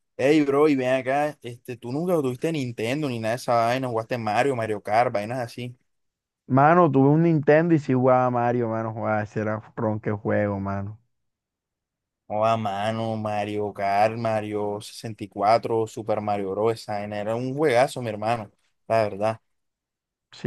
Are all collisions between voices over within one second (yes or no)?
yes